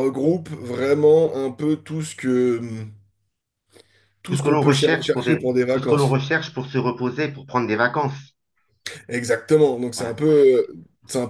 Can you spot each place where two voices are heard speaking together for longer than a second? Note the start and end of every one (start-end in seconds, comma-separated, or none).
4.3-6.2